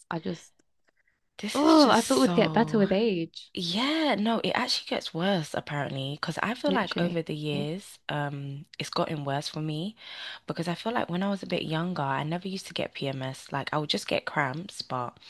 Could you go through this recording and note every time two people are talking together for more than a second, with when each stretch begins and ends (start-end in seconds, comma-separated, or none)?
1.5-2.8